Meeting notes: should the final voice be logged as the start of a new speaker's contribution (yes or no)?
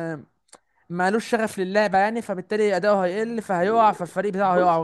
yes